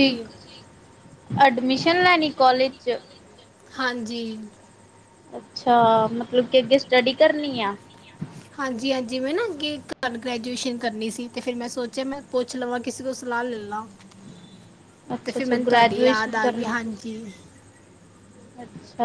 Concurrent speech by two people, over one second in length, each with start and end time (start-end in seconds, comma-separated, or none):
15.2-17.2